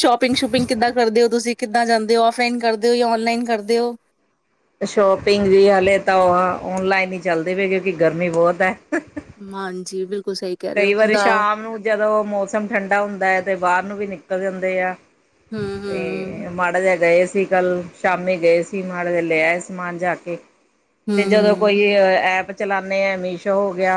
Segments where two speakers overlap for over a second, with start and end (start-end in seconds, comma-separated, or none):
none